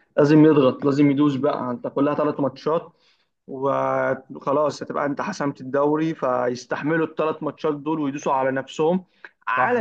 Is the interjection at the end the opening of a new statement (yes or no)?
no